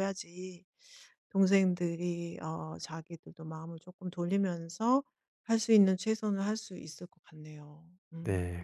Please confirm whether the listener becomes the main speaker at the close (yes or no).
yes